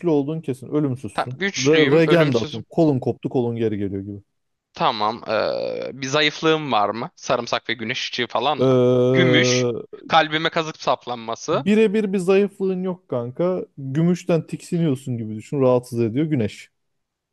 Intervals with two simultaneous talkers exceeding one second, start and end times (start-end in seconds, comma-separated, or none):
1.1-2.6